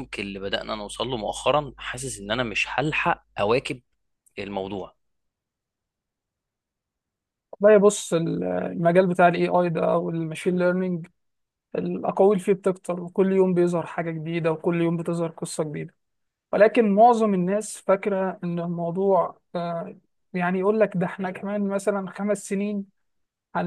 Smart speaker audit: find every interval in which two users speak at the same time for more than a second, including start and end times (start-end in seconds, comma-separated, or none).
none